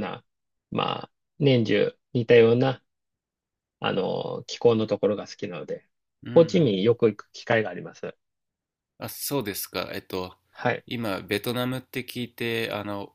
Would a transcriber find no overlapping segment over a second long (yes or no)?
yes